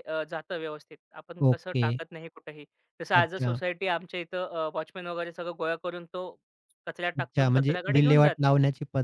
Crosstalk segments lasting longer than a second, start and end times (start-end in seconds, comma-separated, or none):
7.2-8.5